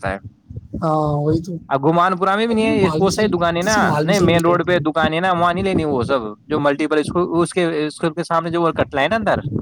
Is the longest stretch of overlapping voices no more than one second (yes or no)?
no